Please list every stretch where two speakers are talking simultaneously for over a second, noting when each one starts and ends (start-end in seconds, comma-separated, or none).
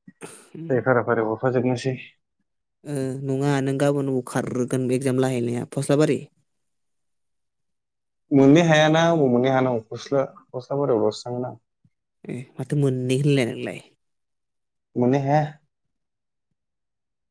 none